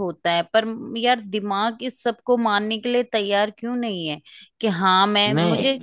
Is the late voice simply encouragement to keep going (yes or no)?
yes